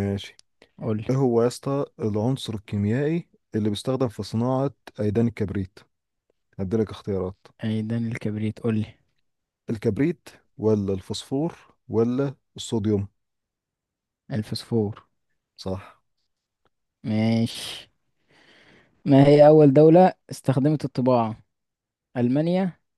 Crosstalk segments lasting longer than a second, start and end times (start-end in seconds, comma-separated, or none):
none